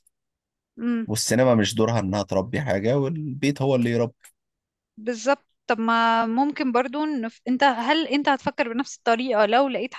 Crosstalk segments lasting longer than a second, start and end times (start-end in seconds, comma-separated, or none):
none